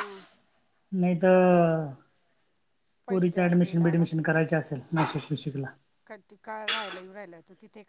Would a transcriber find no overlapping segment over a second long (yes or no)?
no